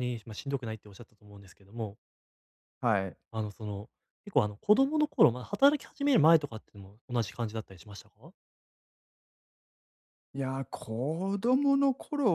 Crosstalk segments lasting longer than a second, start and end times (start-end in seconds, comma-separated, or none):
none